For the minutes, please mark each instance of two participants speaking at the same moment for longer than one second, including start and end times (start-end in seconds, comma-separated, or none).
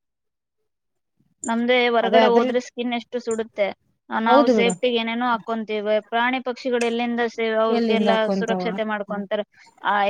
7.8-9.3